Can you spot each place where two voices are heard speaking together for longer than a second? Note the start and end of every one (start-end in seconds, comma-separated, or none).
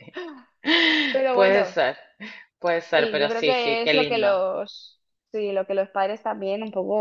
3.0-4.4